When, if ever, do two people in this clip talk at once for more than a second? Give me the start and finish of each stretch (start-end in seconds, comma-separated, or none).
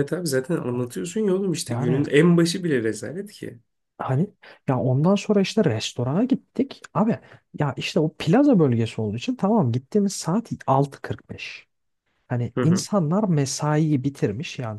none